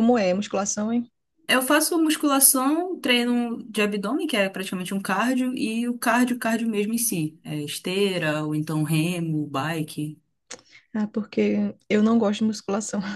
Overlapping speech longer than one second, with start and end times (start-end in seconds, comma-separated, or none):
none